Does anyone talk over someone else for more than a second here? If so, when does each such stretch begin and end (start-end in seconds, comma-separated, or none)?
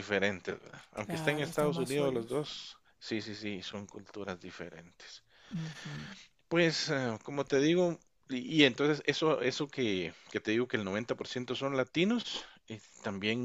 0.9-2.5